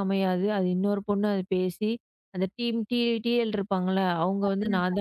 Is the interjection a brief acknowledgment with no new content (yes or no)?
yes